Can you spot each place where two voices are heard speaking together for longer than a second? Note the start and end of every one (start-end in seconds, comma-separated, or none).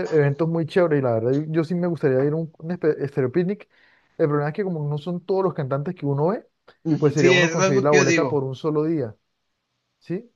7.0-8.4